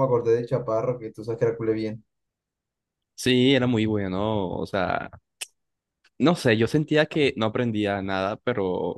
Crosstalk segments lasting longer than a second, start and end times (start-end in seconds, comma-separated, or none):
none